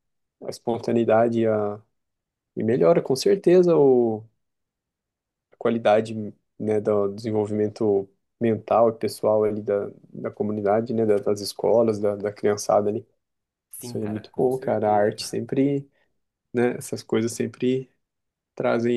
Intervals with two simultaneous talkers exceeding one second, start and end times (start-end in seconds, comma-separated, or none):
13.8-15.4